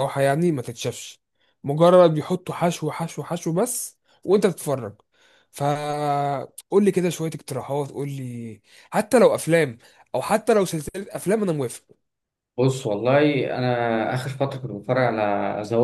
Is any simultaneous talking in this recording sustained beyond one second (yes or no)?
no